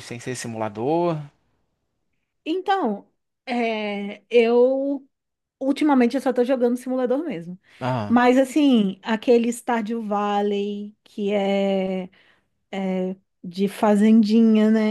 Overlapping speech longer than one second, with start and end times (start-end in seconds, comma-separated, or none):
none